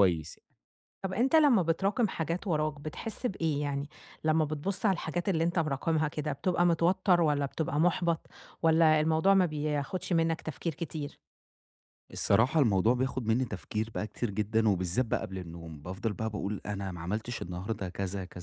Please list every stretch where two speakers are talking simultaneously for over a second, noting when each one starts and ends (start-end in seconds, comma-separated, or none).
none